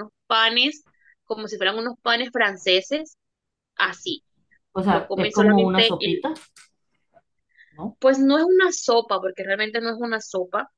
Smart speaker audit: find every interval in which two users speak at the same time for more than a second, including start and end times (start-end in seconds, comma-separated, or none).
4.9-6.2